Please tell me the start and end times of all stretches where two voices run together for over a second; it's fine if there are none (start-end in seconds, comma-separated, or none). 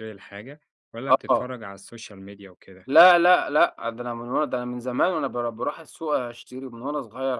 none